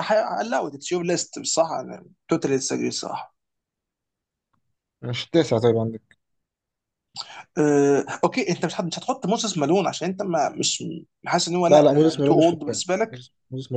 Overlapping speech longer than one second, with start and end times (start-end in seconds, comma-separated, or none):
11.7-13.2